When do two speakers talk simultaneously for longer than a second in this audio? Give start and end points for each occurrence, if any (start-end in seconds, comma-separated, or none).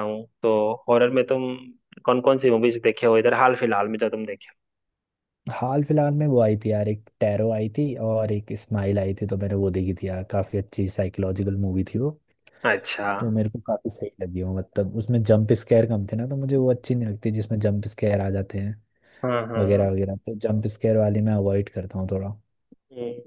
none